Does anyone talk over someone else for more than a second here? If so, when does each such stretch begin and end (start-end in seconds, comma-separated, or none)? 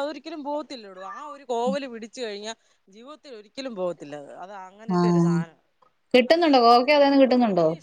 none